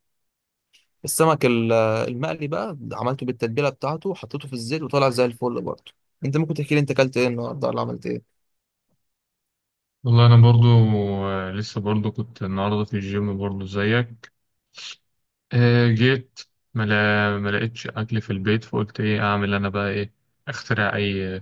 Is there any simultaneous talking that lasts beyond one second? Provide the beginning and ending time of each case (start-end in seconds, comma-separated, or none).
none